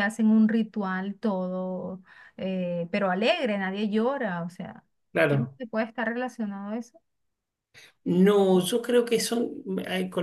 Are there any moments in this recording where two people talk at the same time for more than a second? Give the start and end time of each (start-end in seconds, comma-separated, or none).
none